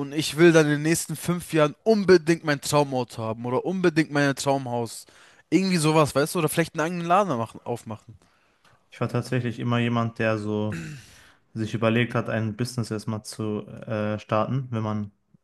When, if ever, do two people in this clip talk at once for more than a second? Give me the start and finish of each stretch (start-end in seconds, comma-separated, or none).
none